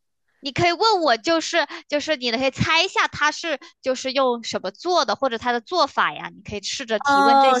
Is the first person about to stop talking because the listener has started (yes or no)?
yes